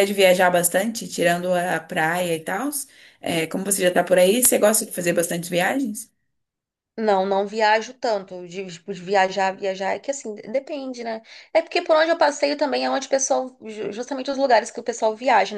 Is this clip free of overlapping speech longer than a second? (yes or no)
yes